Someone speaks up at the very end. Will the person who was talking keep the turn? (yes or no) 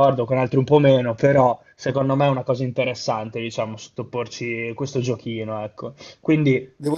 no